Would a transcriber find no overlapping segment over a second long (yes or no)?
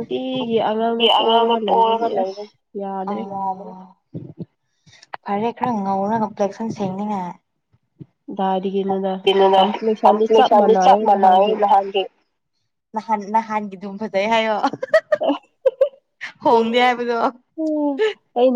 no